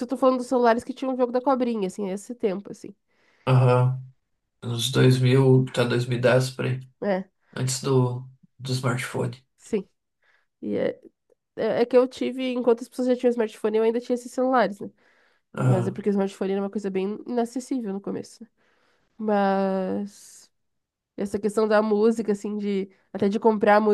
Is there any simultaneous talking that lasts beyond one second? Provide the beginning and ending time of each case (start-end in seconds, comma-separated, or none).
none